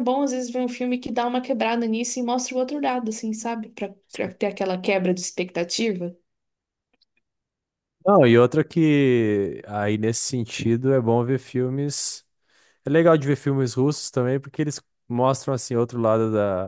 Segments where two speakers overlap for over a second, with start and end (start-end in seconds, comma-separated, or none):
none